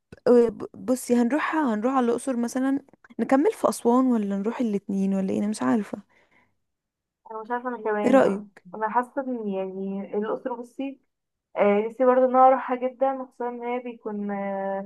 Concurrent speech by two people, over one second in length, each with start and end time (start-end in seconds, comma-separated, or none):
none